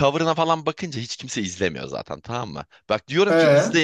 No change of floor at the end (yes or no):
yes